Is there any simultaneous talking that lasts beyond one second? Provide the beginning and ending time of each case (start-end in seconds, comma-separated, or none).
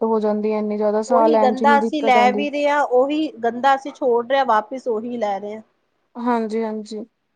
none